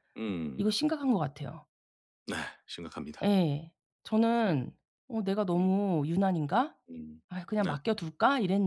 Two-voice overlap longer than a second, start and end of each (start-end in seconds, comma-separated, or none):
none